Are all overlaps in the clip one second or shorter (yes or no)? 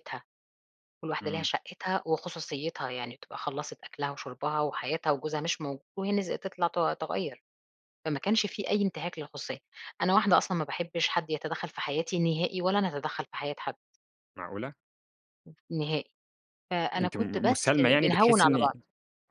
no